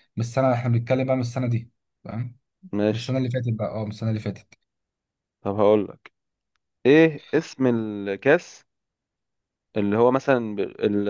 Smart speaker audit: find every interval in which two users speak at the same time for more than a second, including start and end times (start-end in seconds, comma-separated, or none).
none